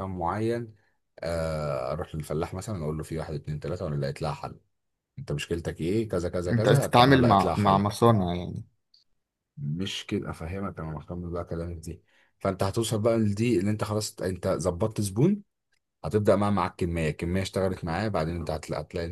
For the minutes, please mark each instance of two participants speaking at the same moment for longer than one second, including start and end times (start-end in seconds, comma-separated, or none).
6.5-7.8